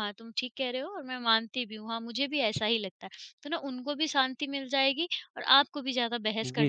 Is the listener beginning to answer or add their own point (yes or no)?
yes